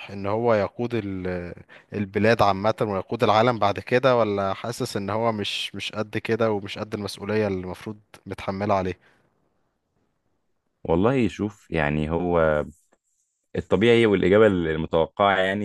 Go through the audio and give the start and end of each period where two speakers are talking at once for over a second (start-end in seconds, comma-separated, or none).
none